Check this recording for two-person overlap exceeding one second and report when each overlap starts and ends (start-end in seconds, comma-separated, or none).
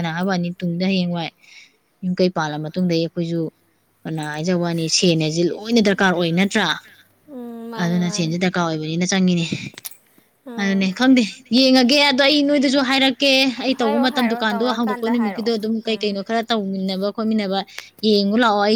13.8-16.2